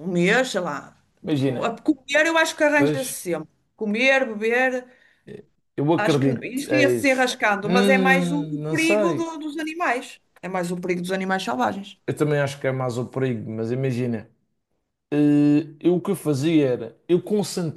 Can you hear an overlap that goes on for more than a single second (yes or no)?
yes